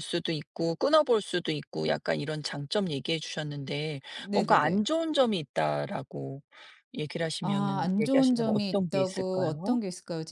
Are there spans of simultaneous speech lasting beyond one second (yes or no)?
yes